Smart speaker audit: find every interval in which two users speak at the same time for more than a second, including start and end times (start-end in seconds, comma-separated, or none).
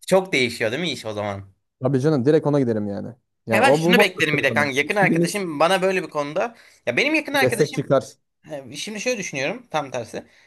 3.5-5.4